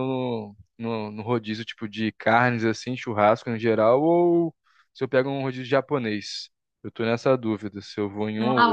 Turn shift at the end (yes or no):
yes